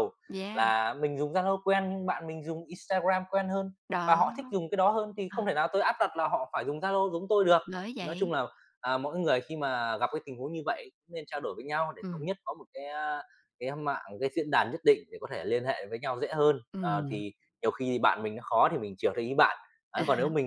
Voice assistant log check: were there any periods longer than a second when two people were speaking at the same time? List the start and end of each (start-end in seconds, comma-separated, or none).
none